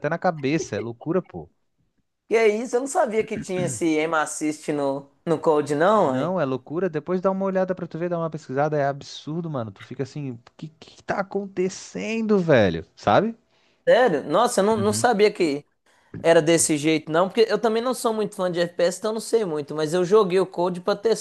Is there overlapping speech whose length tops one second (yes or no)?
no